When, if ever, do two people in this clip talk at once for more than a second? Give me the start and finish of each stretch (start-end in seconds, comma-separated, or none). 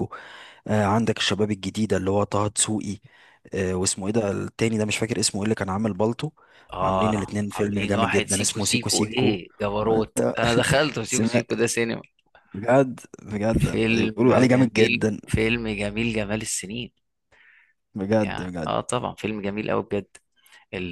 6.8-9.4, 13.6-15.2